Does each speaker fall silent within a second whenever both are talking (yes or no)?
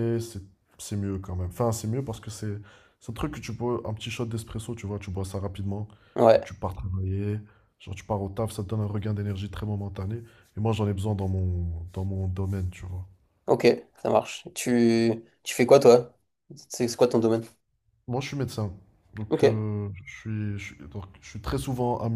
yes